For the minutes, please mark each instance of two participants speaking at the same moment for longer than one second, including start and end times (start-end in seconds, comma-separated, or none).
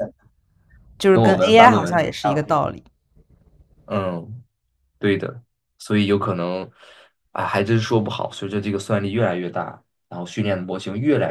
1.1-2.5